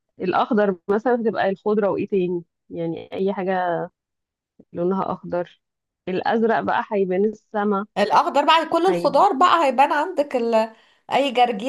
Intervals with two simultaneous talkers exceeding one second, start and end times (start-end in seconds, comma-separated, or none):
none